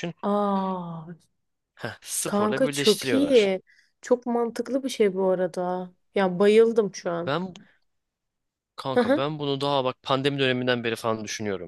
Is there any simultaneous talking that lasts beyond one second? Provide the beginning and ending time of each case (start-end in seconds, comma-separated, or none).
2.2-3.5